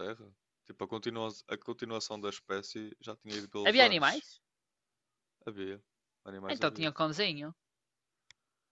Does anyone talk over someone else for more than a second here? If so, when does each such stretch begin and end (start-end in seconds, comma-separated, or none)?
none